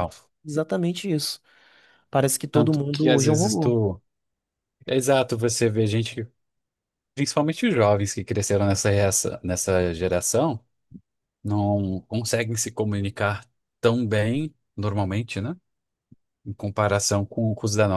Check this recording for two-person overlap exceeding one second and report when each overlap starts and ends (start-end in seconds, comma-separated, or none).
2.5-3.8